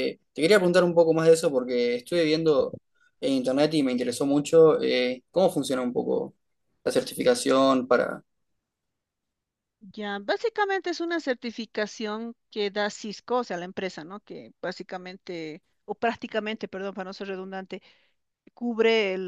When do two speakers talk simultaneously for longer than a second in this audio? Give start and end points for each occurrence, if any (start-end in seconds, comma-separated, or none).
none